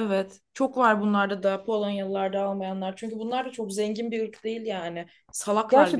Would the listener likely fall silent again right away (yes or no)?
no